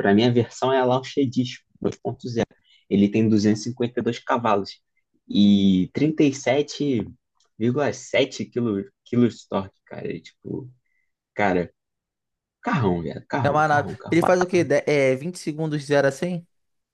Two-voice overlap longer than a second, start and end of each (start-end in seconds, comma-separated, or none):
13.4-14.7